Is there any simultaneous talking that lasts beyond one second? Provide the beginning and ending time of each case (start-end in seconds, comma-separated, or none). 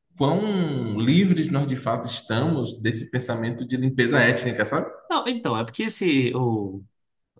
none